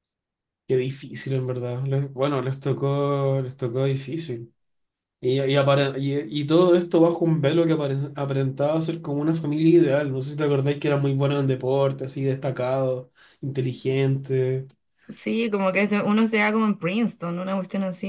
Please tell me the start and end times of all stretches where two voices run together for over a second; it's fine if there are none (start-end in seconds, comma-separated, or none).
none